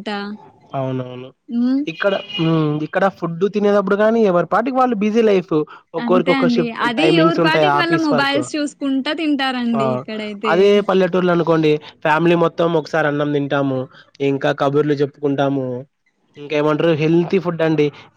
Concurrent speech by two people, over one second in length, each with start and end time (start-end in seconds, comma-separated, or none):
6.1-8.4